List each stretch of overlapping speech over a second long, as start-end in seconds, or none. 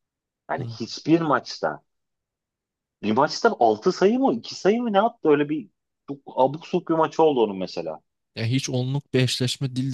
none